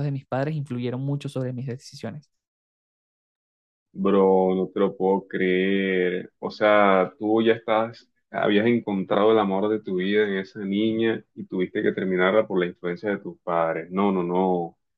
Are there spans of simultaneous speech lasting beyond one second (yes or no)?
no